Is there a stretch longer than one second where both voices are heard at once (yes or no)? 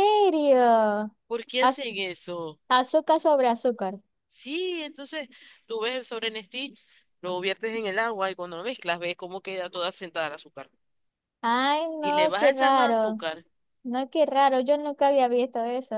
yes